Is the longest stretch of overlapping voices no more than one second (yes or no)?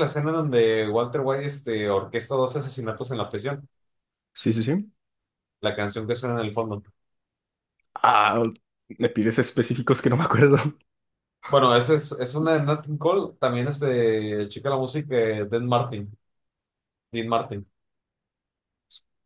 yes